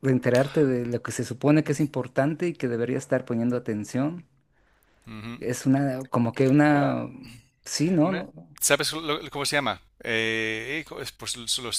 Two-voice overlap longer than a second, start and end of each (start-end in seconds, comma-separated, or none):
none